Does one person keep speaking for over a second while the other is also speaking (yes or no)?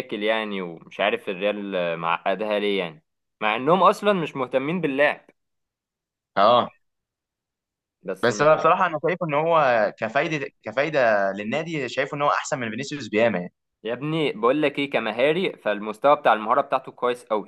no